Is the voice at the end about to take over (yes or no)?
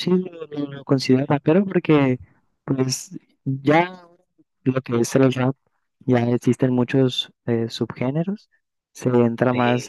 no